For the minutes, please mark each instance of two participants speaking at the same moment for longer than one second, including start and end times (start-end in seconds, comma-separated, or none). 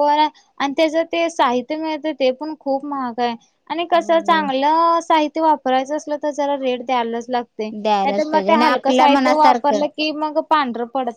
7.8-9.8